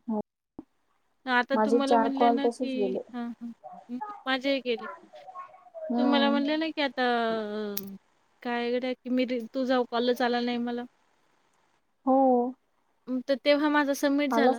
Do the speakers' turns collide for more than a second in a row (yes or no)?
yes